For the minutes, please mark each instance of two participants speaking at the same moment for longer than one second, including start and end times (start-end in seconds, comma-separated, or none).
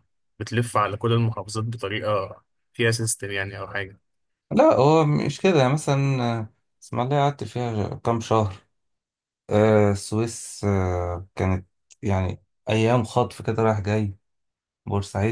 none